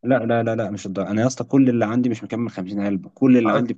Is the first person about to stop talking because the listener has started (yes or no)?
no